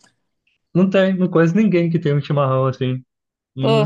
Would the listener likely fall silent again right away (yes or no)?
yes